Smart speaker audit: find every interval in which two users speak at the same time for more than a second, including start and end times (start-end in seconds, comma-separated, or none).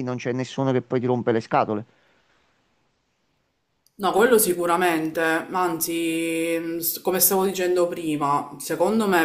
none